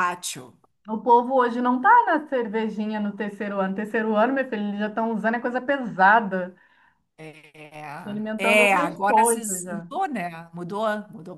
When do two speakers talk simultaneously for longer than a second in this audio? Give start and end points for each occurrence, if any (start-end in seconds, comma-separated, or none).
8.4-9.9